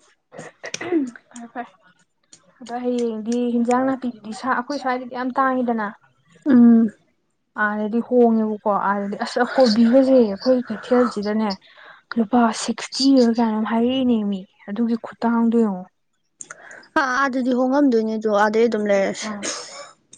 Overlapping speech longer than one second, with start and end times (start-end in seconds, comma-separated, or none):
none